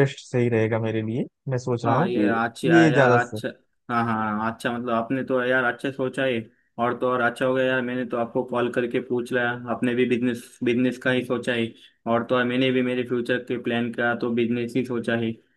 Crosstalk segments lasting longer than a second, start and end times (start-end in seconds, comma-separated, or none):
1.9-3.4